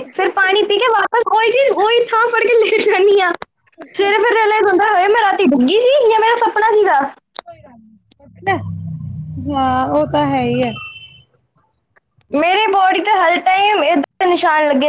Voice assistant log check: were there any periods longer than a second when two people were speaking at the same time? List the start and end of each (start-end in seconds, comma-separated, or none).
none